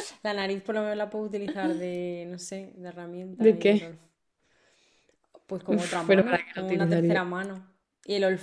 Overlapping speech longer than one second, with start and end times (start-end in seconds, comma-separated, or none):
5.7-7.2